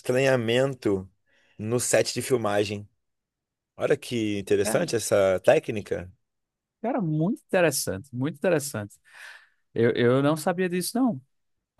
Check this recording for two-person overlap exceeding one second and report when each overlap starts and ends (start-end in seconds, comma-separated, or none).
none